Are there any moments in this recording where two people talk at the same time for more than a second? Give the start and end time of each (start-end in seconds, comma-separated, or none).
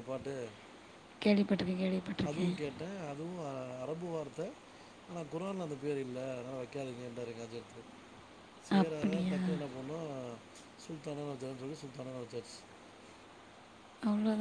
none